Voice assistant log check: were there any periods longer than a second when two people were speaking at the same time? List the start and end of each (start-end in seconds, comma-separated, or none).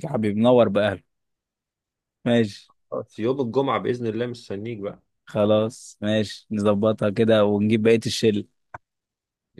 none